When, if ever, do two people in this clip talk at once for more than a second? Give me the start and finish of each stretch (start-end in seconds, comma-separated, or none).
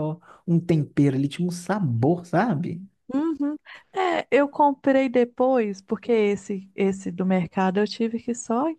none